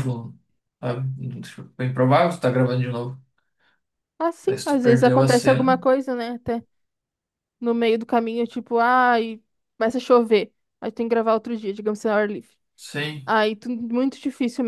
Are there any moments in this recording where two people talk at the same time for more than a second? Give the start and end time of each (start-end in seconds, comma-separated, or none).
4.5-5.7